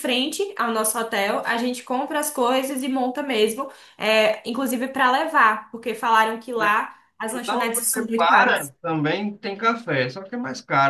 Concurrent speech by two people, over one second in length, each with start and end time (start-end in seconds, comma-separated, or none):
7.3-8.7